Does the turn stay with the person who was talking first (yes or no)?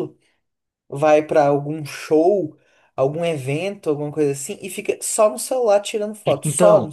no